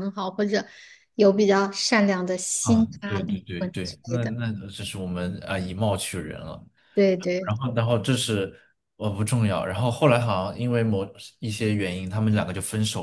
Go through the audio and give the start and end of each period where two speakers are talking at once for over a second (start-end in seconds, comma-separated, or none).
2.6-4.3